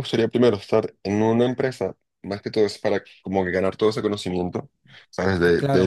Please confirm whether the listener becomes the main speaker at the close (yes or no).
no